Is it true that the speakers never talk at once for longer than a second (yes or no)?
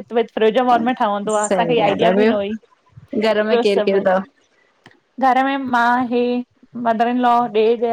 no